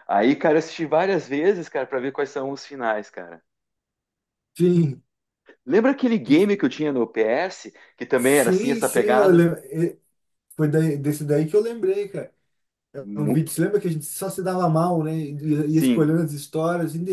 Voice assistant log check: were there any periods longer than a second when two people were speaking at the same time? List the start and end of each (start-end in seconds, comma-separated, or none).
8.2-9.4